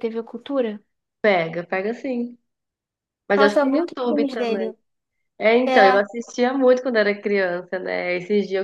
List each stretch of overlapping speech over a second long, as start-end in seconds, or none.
3.3-4.7